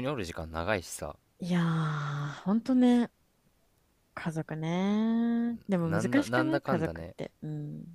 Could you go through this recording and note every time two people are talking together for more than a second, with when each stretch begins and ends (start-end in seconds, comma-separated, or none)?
5.8-7.2